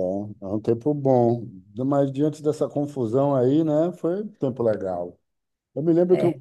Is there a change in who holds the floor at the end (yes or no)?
no